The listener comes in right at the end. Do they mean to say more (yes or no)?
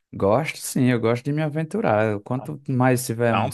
no